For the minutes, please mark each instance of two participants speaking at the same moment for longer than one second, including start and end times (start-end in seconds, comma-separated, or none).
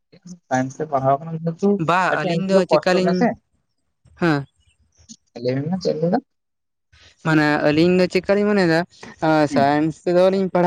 1.8-3.3